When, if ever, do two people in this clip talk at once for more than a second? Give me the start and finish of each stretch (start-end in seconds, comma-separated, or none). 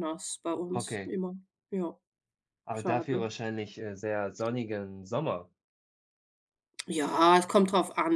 none